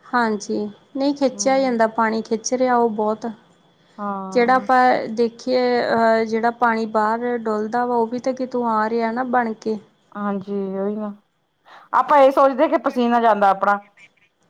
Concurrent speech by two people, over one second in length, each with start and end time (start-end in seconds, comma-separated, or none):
none